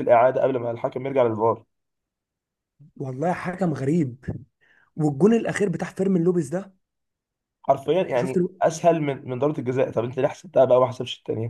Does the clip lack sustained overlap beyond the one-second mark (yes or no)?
yes